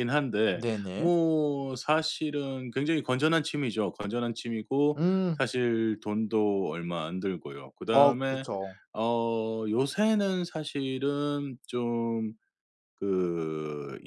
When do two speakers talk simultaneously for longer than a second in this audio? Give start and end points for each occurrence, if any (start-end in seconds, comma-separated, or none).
none